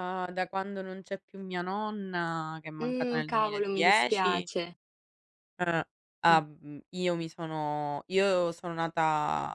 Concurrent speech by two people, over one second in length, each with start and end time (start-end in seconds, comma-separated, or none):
2.8-4.5